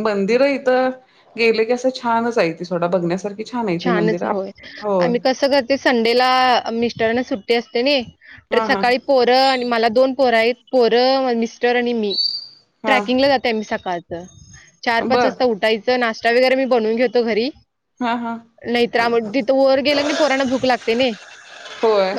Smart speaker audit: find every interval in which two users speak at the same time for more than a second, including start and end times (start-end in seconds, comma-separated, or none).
none